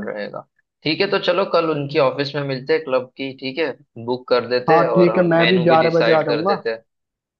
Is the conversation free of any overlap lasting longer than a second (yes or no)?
no